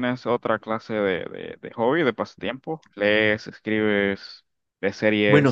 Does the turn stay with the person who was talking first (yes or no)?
no